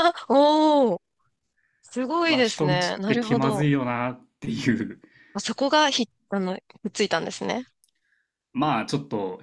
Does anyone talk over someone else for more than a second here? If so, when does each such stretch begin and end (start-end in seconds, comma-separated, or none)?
2.3-3.7